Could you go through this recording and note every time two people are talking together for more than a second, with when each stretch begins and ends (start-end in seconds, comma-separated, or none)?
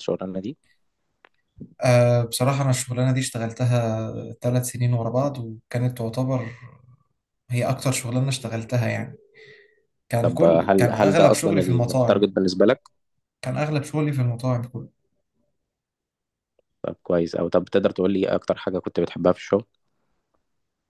10.2-12.3